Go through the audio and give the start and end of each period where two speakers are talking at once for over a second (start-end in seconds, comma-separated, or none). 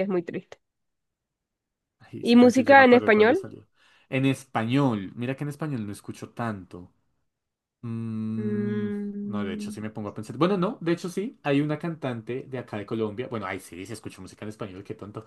2.2-3.4, 8.4-9.8